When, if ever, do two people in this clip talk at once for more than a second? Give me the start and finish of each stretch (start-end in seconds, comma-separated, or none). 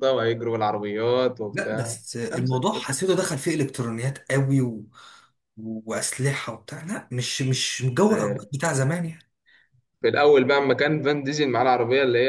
1.5-2.9